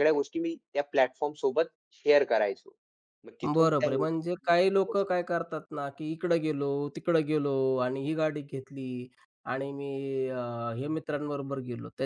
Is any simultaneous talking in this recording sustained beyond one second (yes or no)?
yes